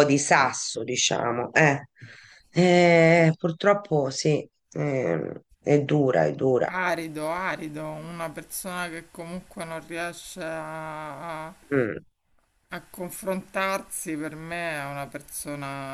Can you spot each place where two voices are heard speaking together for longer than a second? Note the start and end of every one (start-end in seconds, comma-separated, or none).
none